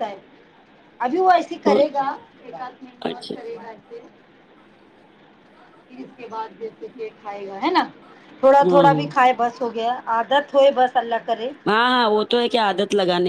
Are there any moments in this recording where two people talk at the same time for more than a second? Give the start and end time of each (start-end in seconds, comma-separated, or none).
none